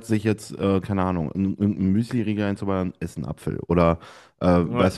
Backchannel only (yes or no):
yes